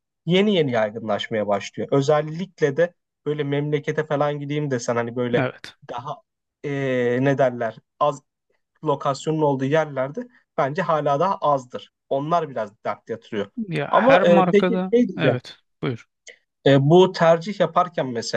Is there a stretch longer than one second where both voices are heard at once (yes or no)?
yes